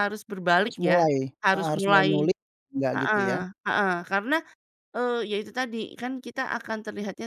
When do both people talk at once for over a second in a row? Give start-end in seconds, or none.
0.6-2.3